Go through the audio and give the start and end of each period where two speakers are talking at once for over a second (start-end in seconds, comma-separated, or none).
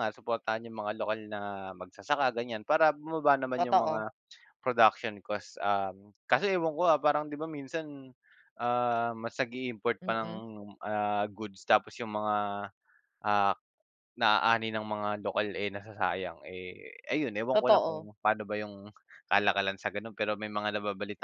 none